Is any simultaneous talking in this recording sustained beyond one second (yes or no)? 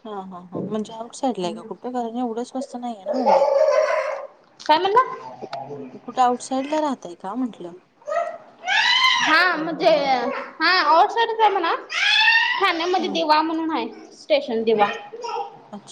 no